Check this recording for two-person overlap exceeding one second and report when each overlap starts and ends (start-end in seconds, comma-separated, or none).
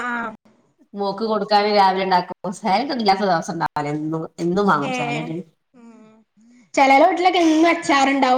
none